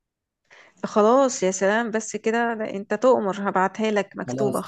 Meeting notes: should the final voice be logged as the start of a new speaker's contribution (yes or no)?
yes